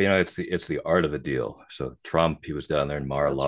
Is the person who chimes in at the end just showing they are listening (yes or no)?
yes